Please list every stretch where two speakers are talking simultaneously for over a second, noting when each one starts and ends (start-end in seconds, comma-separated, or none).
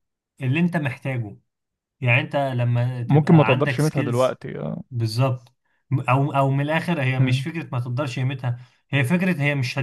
3.1-4.4